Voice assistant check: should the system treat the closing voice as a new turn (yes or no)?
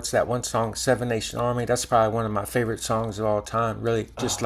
no